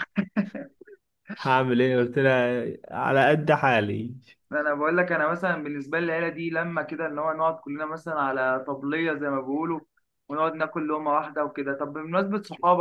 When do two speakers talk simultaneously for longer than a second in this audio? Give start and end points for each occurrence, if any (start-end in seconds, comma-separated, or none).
none